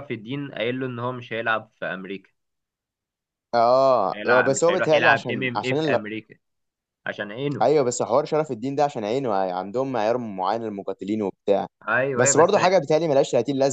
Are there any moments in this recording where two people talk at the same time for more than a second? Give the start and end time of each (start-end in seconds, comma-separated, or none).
4.1-6.0